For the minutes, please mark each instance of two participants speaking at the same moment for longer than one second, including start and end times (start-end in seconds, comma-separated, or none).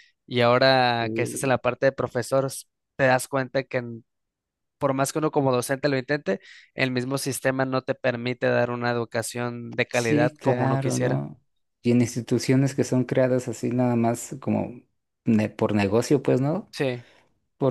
9.9-11.2